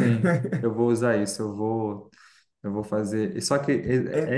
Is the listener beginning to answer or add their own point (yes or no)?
yes